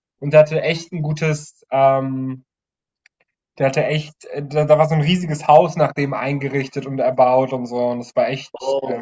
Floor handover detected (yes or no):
yes